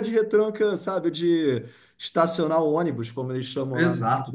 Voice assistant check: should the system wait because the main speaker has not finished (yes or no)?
no